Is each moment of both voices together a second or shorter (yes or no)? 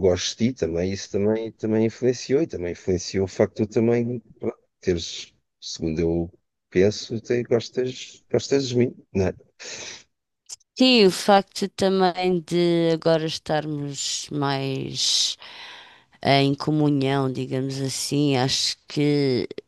yes